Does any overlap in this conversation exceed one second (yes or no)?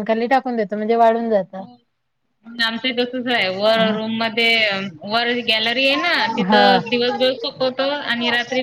no